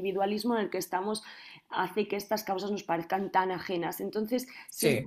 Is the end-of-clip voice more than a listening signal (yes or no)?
no